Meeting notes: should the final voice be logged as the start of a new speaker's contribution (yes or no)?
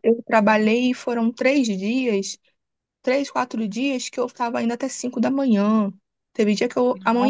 no